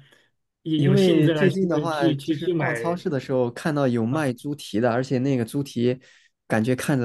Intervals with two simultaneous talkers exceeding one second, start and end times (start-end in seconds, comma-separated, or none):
0.8-3.0